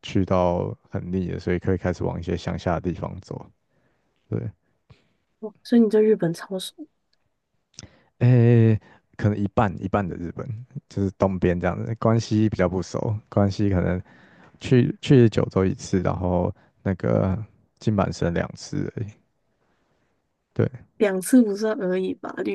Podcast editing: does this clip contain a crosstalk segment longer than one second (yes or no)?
no